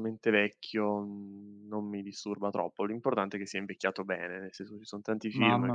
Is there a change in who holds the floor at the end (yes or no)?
yes